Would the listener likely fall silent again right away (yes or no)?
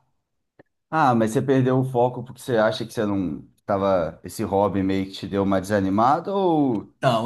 no